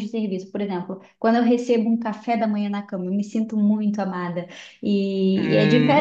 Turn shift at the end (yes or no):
yes